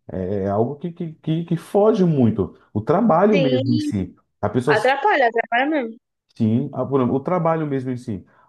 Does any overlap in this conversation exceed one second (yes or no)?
no